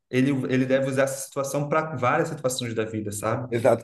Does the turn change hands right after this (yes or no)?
yes